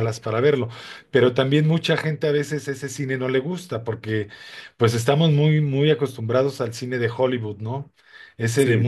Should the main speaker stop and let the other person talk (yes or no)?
no